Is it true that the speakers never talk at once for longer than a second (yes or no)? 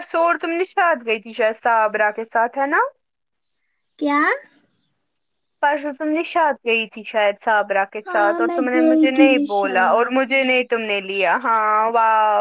no